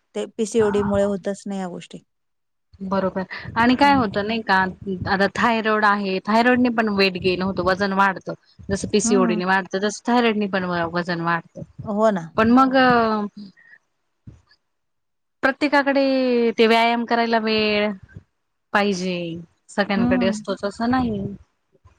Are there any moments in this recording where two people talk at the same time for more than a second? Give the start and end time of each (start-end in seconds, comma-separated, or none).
none